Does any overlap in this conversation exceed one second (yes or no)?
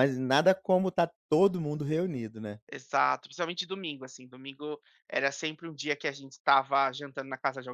no